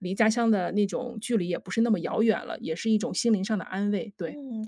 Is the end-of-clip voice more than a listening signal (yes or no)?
yes